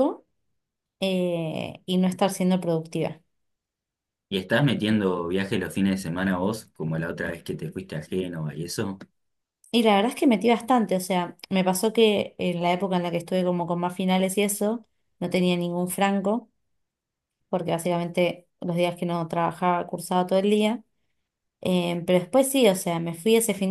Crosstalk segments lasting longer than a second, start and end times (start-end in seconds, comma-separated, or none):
none